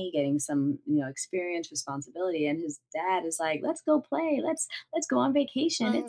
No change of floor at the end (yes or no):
yes